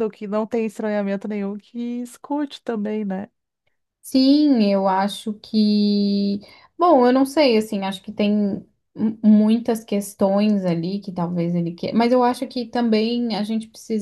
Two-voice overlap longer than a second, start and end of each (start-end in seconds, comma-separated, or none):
none